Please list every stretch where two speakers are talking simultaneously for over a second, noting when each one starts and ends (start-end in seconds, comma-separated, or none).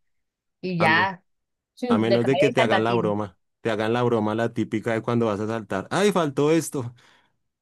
1.9-3.1